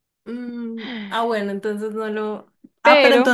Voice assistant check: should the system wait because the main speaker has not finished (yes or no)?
yes